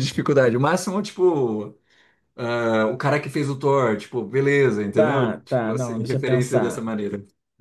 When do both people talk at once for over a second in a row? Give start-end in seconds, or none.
4.9-6.8